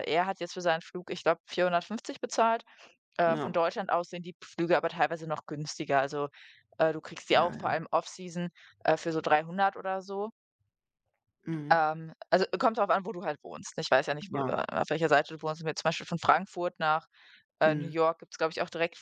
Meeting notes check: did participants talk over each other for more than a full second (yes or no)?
no